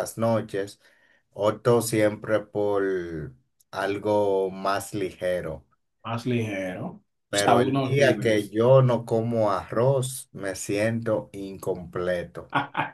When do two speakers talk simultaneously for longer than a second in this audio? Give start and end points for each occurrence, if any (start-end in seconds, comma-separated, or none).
7.3-8.6